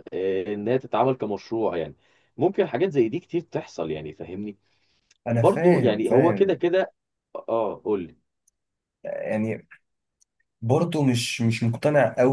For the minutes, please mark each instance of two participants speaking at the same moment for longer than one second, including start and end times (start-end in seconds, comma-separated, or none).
5.3-6.6